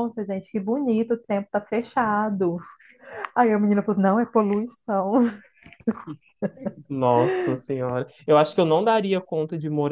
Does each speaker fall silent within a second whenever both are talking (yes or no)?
yes